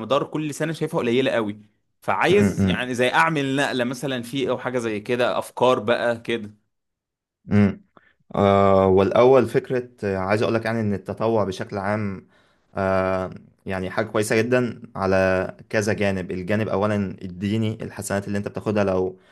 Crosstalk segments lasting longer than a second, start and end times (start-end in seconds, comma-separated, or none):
none